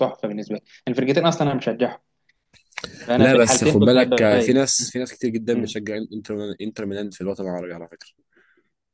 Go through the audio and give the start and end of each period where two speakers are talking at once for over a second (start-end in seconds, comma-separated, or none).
3.2-4.8